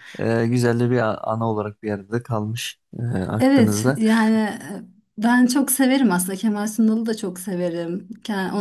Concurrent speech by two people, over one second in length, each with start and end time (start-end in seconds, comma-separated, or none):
none